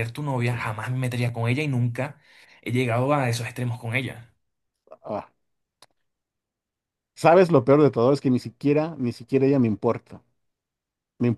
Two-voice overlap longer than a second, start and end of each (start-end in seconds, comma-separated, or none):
none